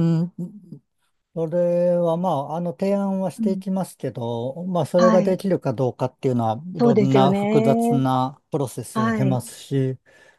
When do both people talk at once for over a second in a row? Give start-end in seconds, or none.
6.8-8.1